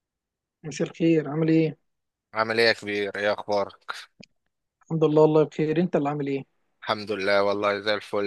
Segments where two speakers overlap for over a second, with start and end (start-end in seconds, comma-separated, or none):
none